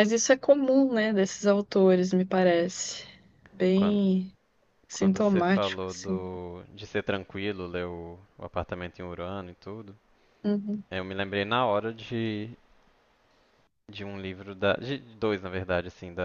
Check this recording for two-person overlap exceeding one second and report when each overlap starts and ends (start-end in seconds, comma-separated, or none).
4.9-6.2